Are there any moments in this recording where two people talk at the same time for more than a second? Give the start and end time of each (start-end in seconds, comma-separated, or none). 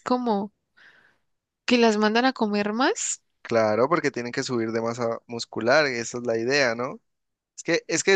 none